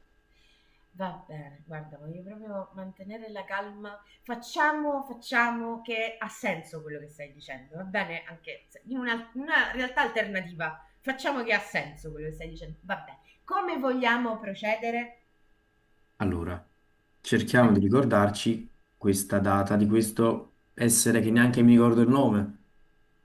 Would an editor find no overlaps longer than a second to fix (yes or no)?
yes